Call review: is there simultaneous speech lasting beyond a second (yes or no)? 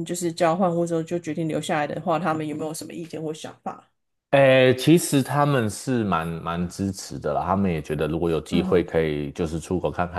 no